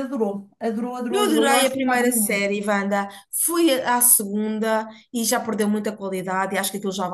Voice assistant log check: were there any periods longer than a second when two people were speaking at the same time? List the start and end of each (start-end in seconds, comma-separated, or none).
1.1-2.5